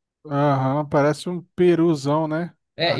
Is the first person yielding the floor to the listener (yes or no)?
yes